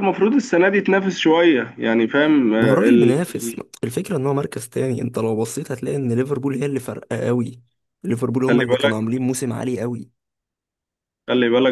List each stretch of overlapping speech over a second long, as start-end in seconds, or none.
none